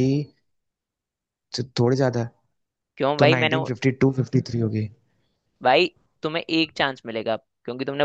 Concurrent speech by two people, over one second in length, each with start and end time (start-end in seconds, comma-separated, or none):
none